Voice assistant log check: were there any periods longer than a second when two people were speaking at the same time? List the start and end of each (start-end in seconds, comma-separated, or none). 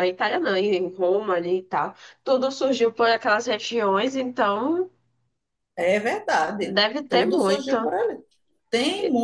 6.6-7.9